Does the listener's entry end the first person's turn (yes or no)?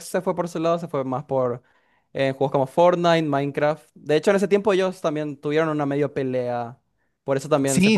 yes